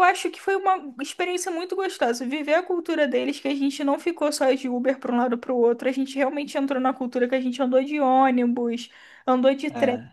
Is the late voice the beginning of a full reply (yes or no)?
no